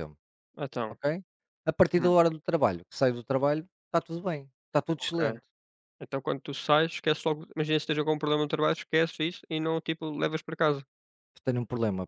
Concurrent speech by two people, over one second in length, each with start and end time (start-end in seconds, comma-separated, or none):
none